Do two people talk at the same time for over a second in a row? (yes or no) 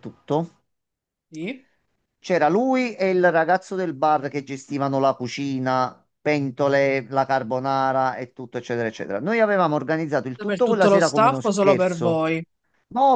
yes